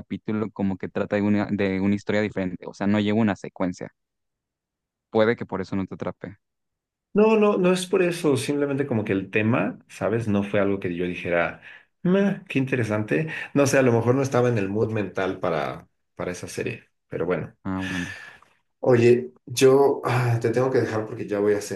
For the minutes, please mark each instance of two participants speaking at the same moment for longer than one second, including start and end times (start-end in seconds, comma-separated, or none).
none